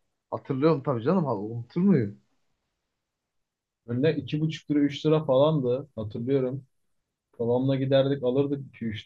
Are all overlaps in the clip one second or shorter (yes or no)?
yes